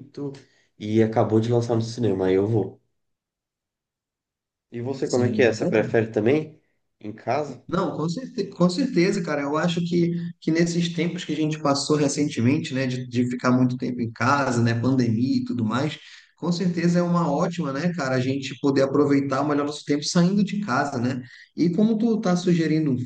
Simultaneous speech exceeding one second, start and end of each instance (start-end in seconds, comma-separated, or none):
none